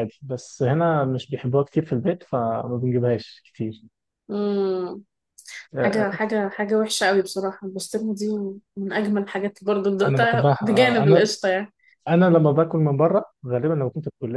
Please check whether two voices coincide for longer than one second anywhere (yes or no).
yes